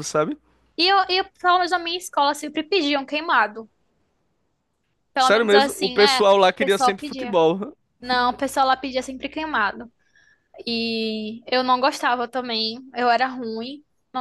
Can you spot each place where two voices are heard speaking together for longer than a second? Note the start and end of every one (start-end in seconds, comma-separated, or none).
5.2-7.4